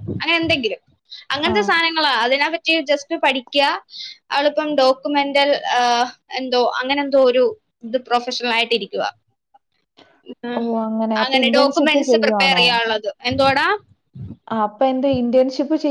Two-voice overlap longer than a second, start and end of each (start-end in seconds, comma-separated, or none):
11.2-12.6